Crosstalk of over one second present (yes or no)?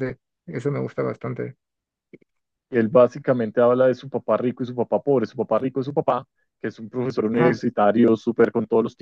no